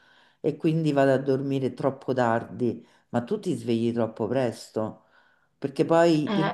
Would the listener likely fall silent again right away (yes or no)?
yes